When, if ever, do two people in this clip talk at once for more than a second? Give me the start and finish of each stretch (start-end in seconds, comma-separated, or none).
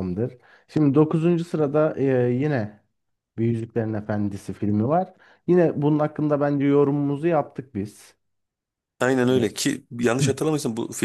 none